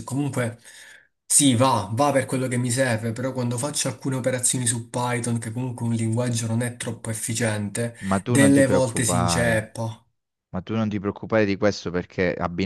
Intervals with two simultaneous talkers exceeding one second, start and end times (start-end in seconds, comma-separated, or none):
8.0-9.7